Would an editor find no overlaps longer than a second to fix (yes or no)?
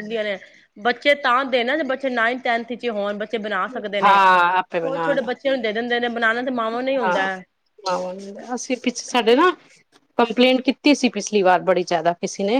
no